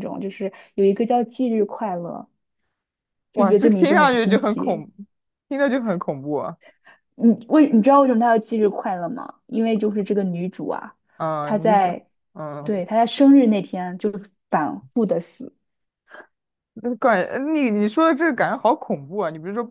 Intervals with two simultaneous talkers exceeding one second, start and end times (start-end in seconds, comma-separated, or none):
3.3-4.8